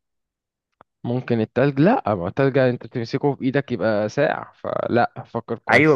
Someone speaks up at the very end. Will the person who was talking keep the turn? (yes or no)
no